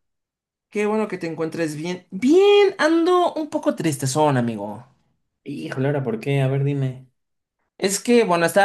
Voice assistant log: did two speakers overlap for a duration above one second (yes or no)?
no